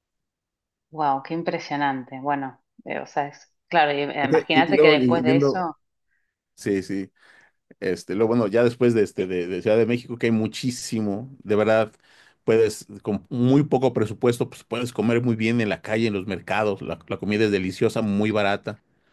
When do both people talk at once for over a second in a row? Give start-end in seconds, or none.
4.2-5.7